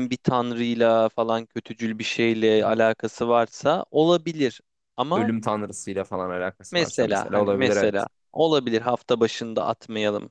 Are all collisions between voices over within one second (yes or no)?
no